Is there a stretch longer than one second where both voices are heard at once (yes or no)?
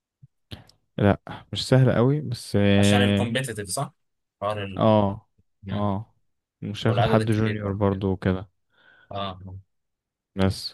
yes